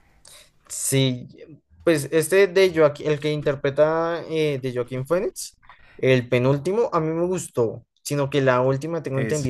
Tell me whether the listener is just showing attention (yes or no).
yes